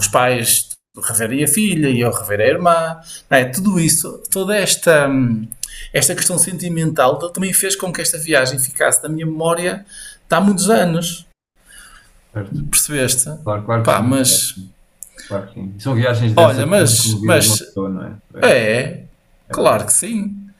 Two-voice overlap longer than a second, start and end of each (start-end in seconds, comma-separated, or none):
16.4-17.6